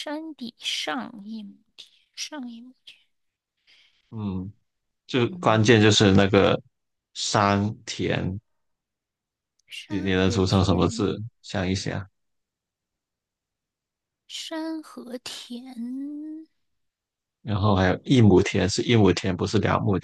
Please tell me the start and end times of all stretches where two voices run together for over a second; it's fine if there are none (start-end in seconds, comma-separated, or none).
9.9-11.2